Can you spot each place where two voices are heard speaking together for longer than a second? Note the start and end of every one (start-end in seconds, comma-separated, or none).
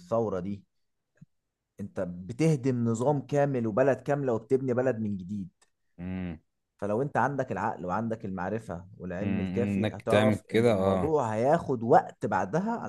9.2-11.2